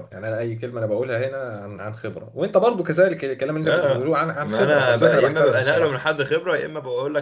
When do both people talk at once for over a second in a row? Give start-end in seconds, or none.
3.6-6.1